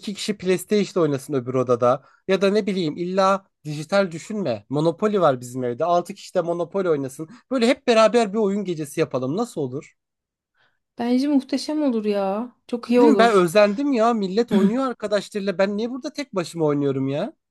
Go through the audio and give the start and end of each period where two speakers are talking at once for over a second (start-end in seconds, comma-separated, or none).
none